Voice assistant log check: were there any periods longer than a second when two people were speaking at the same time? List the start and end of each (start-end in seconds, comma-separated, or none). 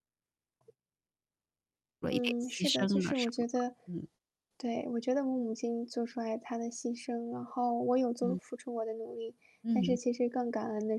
2.1-3.5